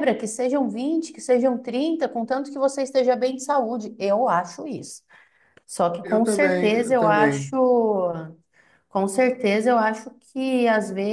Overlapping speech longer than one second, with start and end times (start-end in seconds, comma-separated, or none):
6.0-7.5